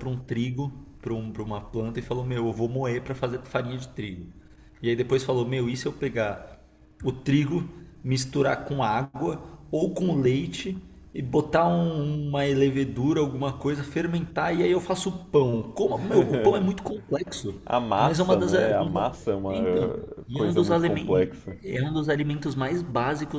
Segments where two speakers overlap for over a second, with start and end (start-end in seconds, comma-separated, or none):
18.0-19.6, 20.3-21.5